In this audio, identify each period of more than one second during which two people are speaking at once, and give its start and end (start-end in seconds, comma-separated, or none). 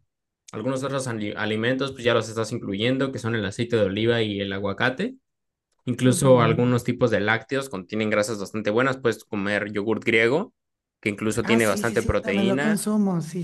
11.4-12.8